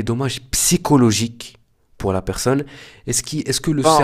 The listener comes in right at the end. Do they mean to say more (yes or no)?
no